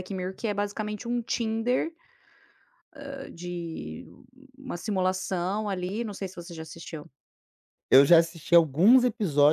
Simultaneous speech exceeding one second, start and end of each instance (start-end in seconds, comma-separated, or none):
none